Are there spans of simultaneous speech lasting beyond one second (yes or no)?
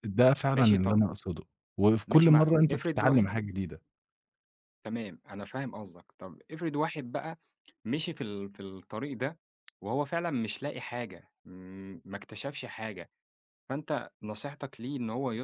yes